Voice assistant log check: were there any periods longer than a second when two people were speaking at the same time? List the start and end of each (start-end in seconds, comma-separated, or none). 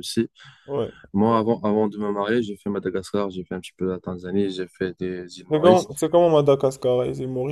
none